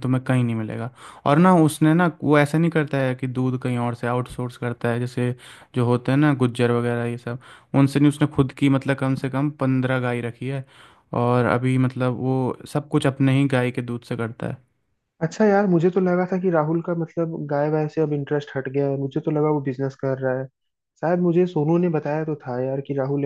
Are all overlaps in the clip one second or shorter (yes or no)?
yes